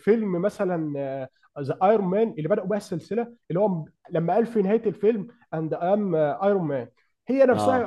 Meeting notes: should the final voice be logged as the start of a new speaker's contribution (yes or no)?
no